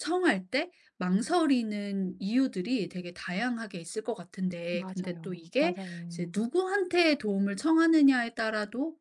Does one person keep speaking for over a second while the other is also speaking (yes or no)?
yes